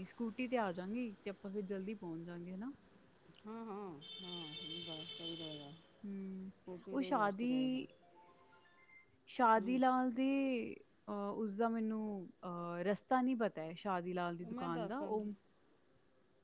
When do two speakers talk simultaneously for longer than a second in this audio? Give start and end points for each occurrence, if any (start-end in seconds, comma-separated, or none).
none